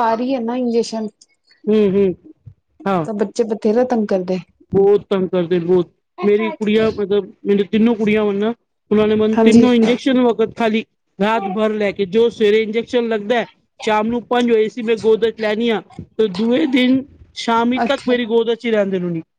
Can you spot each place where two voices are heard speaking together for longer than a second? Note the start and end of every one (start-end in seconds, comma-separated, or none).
none